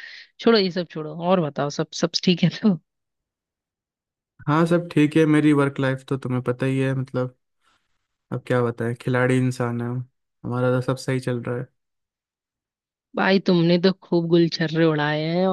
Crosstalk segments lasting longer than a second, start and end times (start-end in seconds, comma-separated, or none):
none